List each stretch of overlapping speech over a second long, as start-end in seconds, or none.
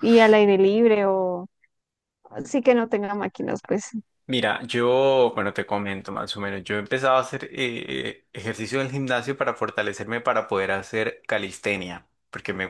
none